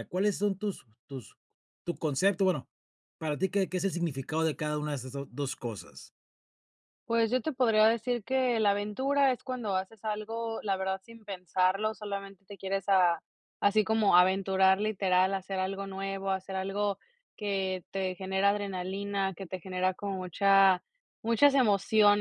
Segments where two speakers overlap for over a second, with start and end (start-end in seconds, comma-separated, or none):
none